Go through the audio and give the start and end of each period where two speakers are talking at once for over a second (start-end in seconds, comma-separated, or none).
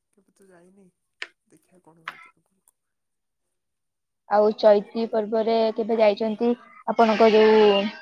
none